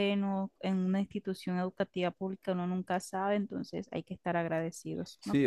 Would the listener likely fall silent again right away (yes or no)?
no